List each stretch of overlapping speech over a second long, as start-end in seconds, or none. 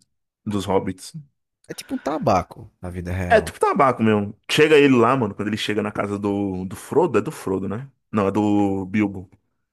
none